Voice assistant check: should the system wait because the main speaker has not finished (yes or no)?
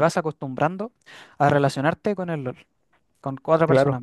no